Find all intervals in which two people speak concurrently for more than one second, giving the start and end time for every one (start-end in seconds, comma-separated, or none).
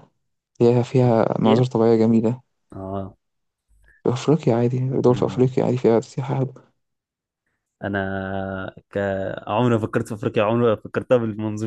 none